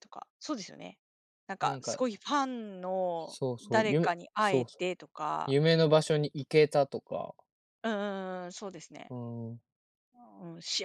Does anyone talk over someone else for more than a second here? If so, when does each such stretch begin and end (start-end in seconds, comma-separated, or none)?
3.2-4.8